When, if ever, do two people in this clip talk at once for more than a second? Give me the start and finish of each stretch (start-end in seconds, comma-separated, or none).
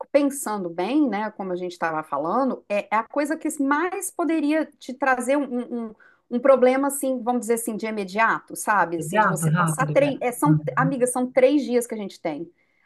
9.0-10.9